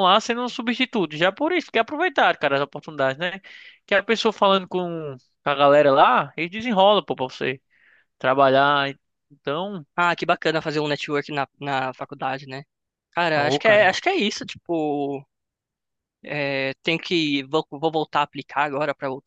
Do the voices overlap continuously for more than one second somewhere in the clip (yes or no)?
no